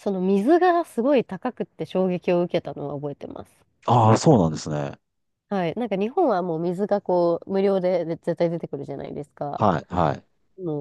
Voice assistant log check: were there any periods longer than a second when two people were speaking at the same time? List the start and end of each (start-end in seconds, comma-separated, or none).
none